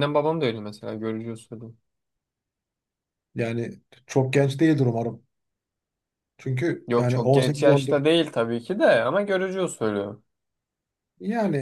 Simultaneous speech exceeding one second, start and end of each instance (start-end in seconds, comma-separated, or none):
6.9-8.3